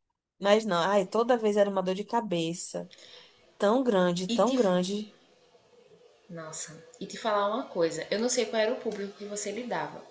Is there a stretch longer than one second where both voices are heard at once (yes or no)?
no